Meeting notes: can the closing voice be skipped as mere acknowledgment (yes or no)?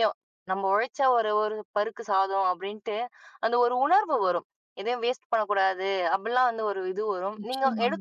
yes